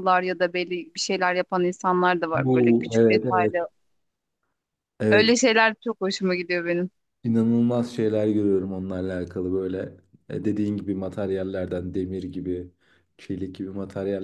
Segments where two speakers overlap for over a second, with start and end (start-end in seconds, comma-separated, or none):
2.3-3.5